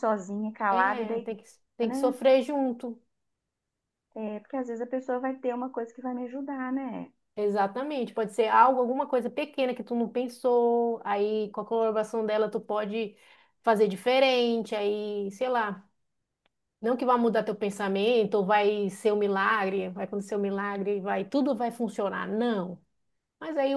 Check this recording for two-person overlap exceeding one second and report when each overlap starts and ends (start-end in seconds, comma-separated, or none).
0.7-2.1